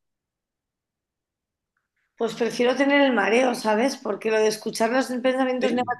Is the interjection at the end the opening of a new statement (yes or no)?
no